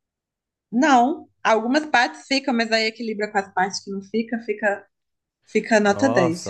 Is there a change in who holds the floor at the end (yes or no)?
yes